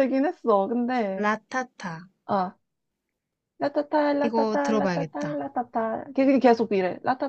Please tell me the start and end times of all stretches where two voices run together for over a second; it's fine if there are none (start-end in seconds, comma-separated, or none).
4.2-5.4